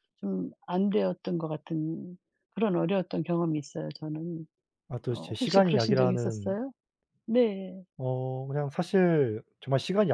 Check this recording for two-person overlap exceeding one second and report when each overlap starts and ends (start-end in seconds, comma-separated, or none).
5.1-6.6